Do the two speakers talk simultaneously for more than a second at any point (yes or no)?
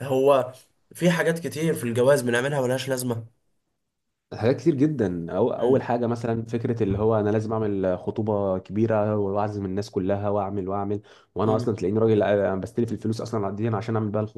no